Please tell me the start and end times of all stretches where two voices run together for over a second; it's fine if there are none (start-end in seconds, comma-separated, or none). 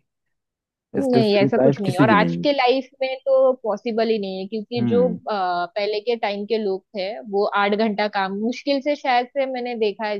1.0-2.5